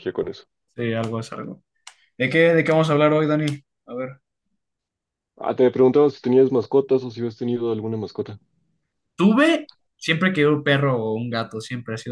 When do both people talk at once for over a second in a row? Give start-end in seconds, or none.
none